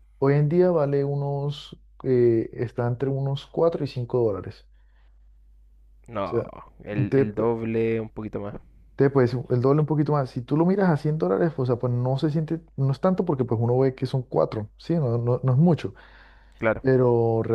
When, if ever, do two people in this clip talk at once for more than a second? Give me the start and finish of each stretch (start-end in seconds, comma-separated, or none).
none